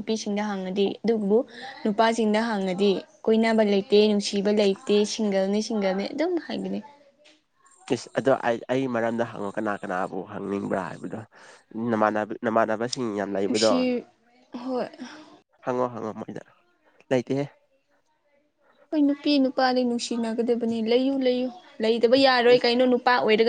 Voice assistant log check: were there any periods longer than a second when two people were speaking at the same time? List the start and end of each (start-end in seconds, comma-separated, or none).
none